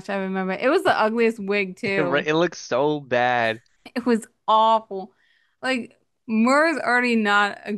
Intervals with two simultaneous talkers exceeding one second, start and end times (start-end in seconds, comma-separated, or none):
none